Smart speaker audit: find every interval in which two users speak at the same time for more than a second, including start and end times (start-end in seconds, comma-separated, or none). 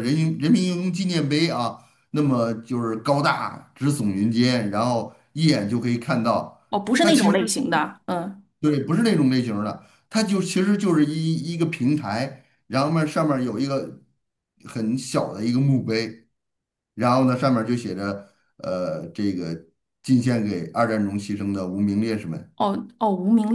none